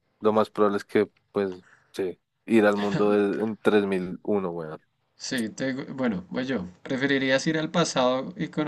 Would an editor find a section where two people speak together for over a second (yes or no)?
no